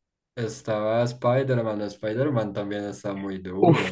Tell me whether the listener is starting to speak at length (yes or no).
yes